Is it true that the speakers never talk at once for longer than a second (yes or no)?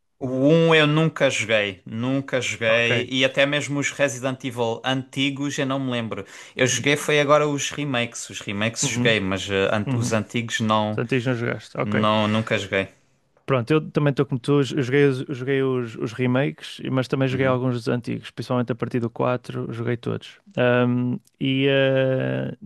yes